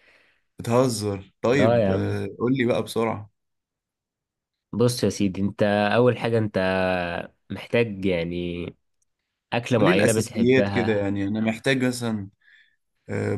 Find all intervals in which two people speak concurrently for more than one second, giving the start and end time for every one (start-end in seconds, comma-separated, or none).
9.7-11.1